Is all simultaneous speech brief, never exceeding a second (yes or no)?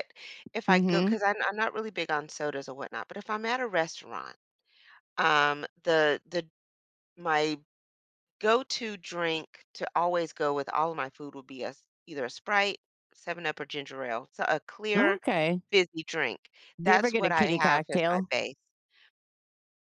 no